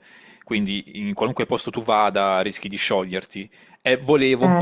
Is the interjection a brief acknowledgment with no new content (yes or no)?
yes